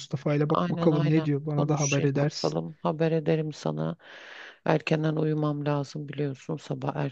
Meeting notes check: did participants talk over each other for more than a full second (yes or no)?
yes